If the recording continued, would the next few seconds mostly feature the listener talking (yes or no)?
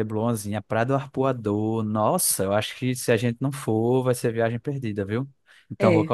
no